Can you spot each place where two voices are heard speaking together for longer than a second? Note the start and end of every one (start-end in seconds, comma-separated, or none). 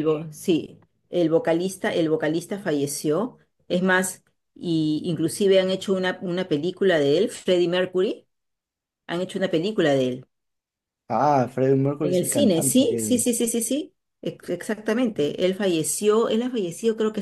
12.0-13.3